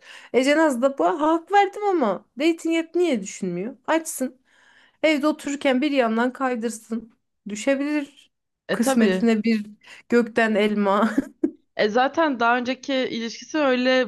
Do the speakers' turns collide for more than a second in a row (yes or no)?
no